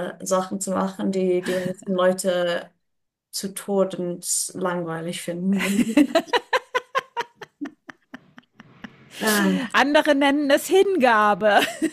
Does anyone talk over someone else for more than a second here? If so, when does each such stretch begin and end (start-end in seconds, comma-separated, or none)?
none